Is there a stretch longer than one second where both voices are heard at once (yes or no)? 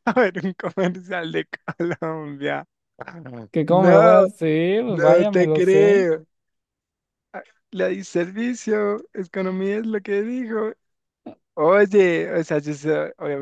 yes